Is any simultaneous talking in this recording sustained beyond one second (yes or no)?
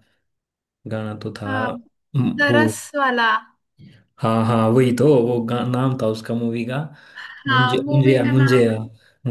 yes